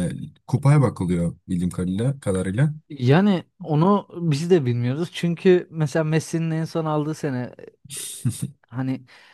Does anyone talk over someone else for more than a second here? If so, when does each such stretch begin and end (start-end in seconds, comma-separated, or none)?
none